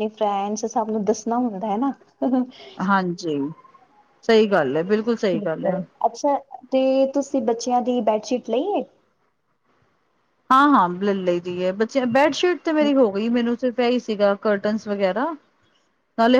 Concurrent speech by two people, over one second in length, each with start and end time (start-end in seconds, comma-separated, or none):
none